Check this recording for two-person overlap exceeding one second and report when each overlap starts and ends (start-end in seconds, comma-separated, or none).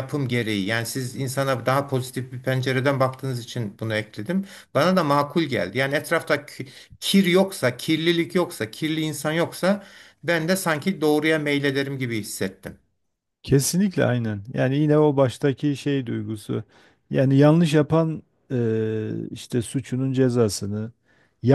none